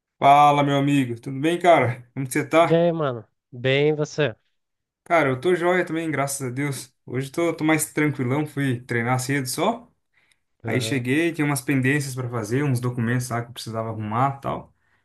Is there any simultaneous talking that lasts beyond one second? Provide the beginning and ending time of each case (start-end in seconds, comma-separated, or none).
none